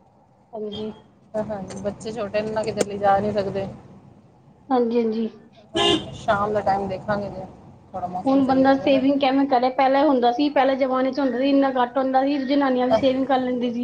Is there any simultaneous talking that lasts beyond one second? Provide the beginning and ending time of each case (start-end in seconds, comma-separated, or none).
none